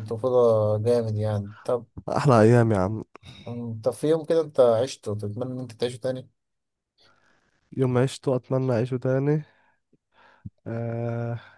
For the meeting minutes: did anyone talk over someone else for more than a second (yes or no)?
no